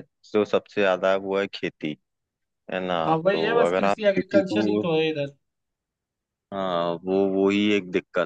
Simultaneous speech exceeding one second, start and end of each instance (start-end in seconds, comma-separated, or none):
3.0-4.8